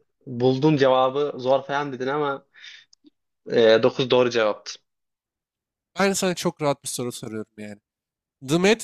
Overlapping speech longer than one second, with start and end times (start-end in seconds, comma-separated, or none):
none